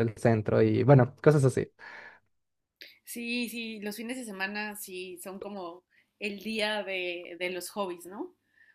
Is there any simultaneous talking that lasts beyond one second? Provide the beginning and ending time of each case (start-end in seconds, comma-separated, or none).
none